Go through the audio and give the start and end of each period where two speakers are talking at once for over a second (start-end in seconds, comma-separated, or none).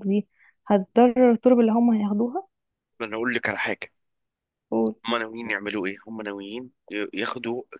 none